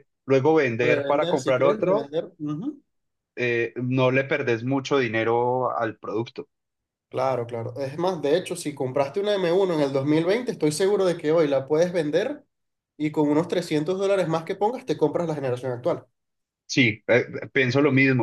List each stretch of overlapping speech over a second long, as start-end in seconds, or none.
0.8-2.1